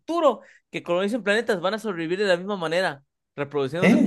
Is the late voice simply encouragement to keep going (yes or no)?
no